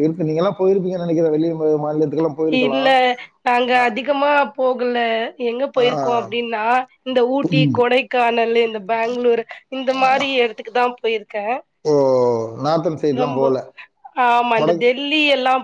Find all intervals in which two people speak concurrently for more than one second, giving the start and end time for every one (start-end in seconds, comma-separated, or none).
none